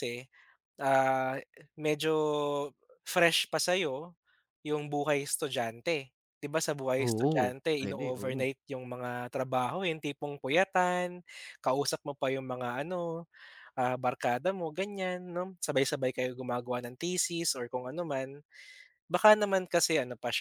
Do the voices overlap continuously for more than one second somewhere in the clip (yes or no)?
yes